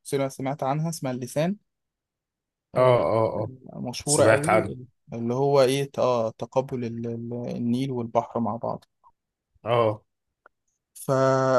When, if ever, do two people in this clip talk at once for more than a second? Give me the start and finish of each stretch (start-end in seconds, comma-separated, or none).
none